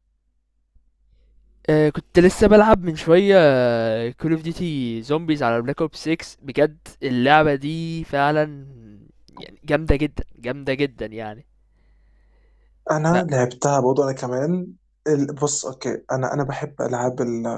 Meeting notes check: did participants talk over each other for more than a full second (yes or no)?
no